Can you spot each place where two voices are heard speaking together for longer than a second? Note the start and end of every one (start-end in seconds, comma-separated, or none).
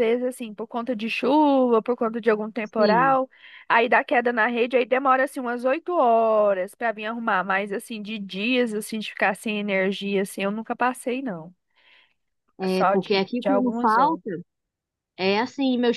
12.7-14.2